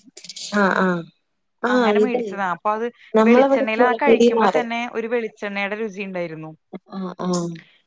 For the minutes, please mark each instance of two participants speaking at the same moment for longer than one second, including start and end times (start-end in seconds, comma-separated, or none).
3.3-4.7